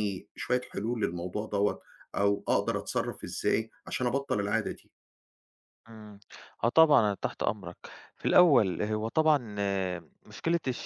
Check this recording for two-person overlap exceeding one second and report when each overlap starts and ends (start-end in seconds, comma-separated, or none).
none